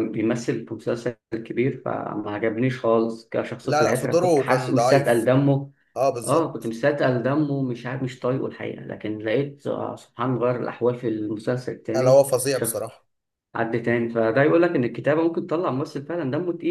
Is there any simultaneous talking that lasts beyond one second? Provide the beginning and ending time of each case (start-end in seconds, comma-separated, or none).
3.6-5.3